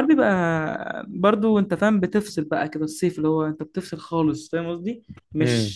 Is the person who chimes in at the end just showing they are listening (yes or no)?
yes